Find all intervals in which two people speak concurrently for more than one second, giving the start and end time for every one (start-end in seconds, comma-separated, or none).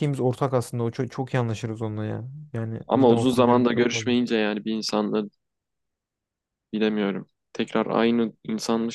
2.9-4.1